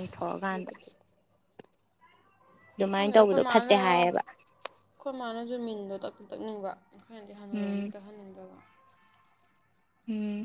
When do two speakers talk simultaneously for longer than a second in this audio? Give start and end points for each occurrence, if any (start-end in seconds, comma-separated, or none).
2.9-4.2